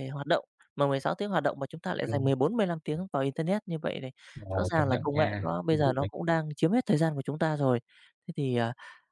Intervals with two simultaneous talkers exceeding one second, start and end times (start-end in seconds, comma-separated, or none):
4.6-6.1